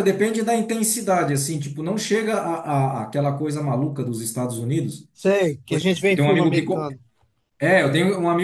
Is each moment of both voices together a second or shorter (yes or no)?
no